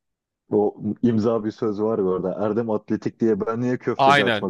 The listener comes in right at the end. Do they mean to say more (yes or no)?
yes